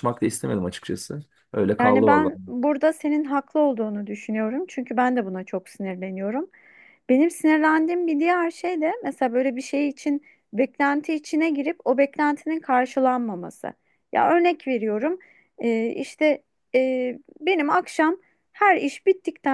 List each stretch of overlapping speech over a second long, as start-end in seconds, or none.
none